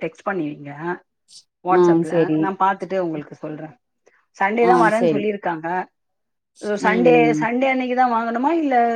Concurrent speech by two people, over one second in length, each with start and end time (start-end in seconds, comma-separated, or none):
none